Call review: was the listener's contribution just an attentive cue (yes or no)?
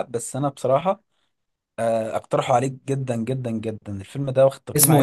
no